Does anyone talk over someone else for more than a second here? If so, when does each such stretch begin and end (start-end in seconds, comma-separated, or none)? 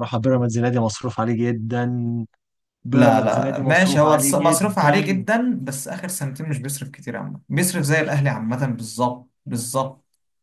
2.9-5.2